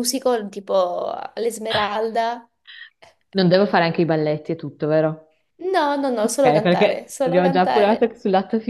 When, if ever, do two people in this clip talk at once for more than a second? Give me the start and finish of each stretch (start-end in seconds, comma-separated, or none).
6.2-8.1